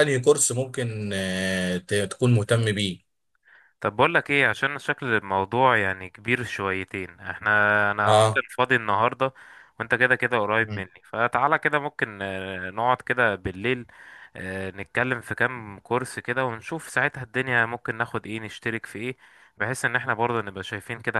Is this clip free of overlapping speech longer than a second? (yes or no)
yes